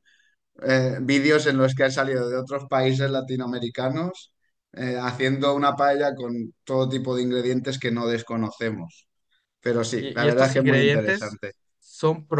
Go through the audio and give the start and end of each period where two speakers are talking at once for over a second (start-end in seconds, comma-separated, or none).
10.0-11.4